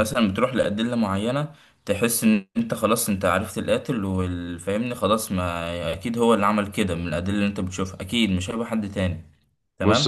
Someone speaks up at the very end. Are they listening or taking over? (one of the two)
taking over